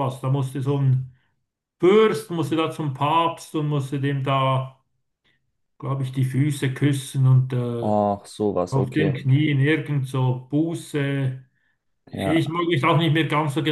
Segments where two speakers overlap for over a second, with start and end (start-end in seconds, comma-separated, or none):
none